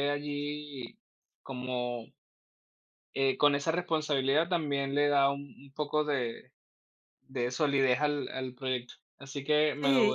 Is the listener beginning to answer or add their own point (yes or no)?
yes